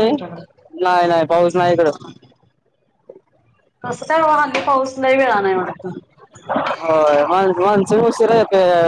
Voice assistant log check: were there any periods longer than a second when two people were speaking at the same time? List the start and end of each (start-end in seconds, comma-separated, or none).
none